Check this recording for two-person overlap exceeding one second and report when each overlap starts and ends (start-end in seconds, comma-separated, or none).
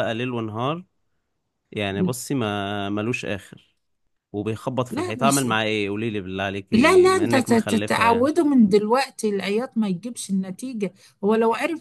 6.7-8.3